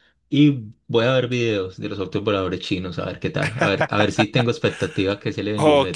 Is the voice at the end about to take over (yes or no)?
yes